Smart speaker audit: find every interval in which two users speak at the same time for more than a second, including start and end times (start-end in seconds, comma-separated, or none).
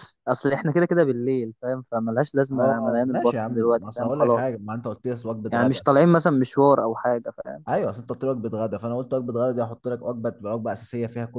2.5-4.6